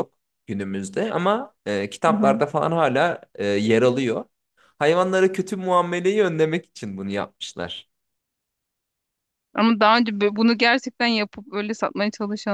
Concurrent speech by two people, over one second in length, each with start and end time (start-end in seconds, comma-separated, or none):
none